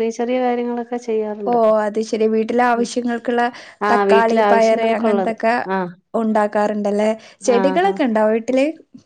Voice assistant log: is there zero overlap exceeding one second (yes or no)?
no